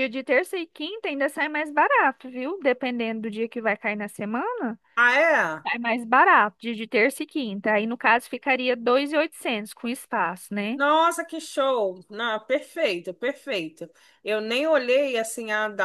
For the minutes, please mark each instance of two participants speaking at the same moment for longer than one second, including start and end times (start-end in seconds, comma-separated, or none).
none